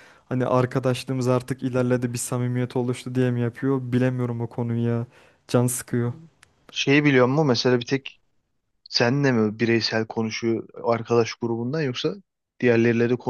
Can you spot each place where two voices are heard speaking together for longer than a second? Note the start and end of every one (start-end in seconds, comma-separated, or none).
none